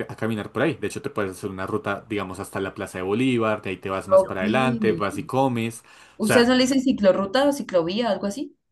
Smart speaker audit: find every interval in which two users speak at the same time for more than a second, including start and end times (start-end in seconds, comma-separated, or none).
none